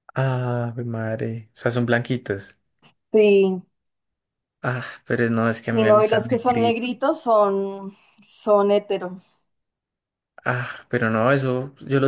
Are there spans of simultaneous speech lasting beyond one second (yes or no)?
yes